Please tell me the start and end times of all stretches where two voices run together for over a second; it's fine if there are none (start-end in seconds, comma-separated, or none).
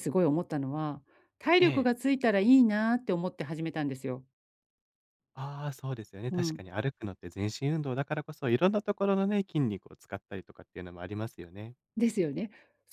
none